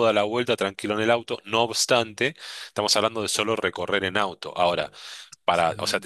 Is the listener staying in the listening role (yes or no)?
yes